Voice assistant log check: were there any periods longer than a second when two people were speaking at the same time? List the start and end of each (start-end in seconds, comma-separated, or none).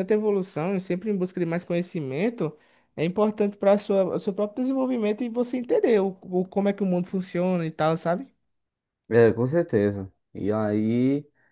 none